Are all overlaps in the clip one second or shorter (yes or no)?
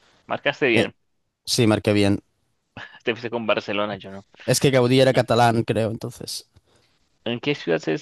yes